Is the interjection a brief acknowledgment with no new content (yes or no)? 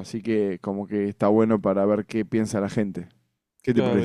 no